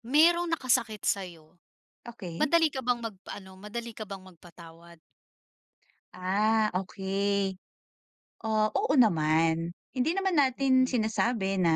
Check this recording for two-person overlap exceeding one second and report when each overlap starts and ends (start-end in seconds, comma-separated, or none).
none